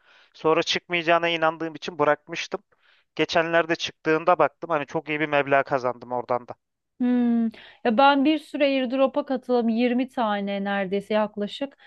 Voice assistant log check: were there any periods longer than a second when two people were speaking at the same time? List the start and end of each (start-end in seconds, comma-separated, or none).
none